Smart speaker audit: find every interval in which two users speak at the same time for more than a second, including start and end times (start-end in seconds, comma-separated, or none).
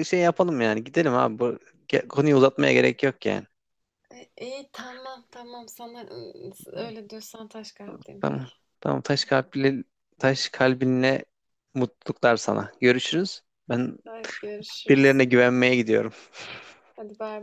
none